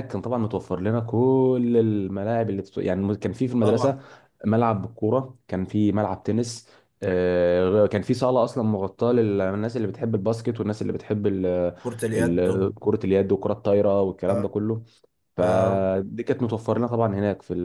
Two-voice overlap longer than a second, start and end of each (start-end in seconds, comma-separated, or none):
none